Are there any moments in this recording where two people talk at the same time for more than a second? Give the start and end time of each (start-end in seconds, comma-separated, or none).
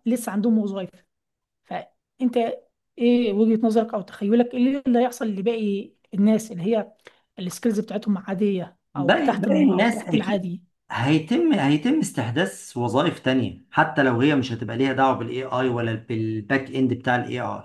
8.9-10.4